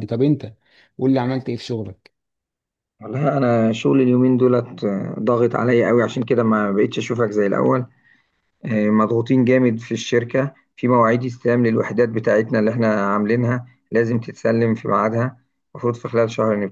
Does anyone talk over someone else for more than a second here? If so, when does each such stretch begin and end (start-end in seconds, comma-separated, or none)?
none